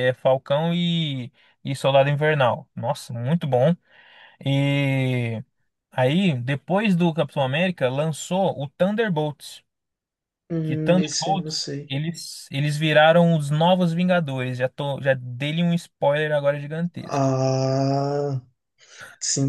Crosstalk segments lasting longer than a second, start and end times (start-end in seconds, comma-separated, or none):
10.6-11.9